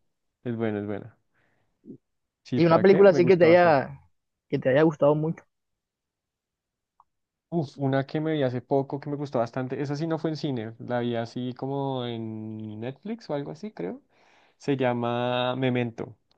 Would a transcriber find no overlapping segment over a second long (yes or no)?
no